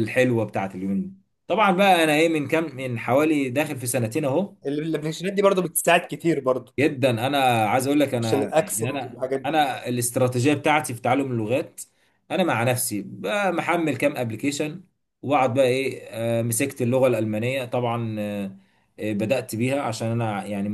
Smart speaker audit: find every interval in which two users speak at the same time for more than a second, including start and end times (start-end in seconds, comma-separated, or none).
8.2-9.5